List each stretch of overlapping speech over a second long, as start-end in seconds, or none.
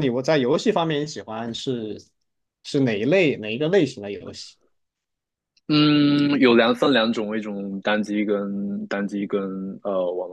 none